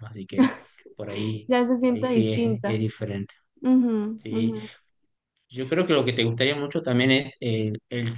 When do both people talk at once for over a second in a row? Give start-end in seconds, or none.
1.5-2.8